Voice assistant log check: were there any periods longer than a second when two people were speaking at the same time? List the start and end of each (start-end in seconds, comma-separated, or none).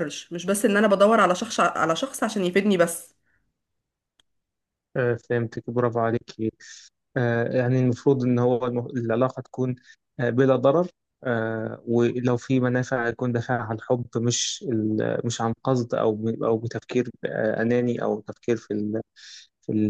none